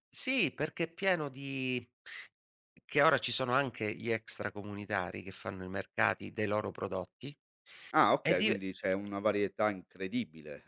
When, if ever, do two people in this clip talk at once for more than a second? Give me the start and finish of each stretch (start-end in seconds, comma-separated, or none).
none